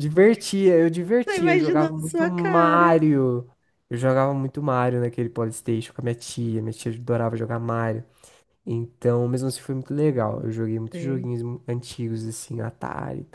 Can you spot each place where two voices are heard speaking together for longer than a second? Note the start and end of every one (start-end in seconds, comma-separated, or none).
1.3-3.0